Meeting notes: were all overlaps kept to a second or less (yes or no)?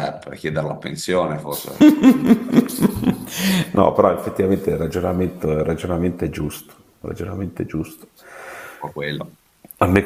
yes